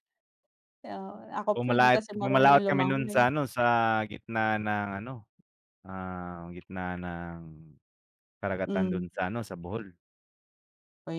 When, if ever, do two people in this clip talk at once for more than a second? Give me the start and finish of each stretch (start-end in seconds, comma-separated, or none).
1.5-3.2